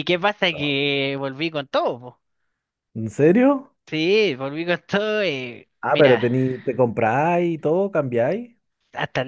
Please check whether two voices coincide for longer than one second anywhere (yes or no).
no